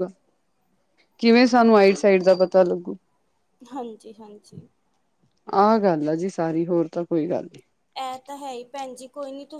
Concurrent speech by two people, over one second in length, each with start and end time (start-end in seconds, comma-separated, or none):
none